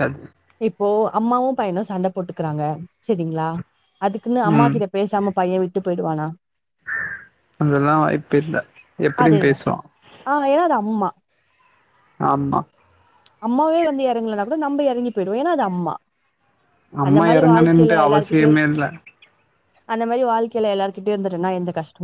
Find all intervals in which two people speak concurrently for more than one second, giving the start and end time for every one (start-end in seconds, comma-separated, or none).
17.1-18.6